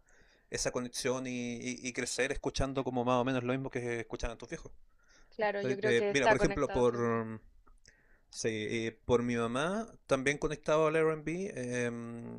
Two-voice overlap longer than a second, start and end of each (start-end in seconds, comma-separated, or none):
5.4-7.2